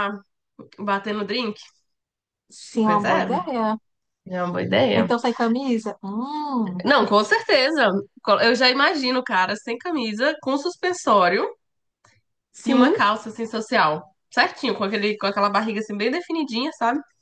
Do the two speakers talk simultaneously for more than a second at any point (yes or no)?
no